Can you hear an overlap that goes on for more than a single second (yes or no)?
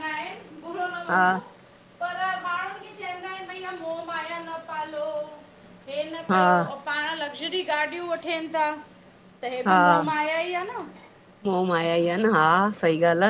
no